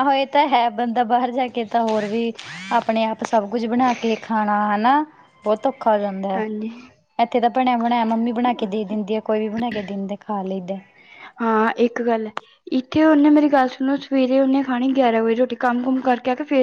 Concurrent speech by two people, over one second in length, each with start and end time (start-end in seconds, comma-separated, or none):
none